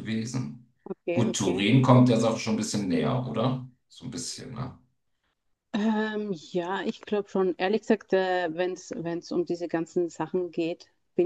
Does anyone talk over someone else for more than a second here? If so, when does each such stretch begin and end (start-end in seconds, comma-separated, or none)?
none